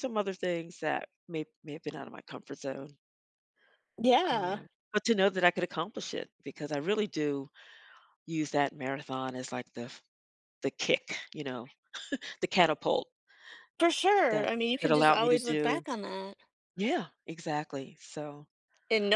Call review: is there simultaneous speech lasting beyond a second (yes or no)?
yes